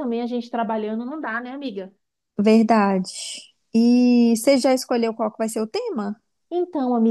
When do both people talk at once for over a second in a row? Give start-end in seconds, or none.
none